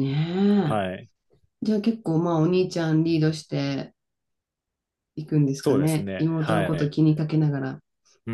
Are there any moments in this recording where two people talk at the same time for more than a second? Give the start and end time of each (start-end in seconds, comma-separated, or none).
5.6-6.9